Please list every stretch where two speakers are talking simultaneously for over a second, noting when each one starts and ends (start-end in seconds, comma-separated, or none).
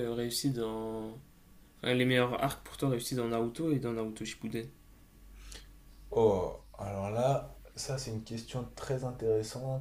none